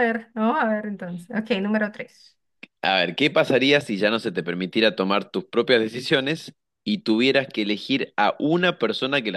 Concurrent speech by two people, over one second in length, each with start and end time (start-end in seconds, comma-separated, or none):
none